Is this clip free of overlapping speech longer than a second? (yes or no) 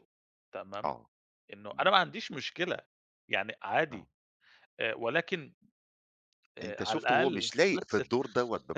no